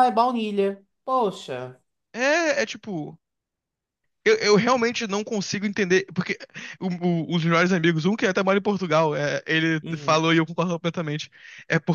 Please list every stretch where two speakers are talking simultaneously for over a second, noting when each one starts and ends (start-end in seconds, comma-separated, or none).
none